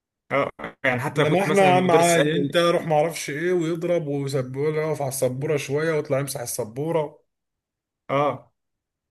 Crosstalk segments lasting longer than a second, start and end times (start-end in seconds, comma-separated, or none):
1.2-2.6